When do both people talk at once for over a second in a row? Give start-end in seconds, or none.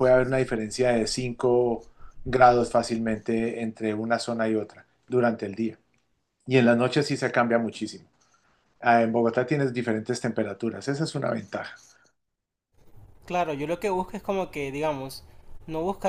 none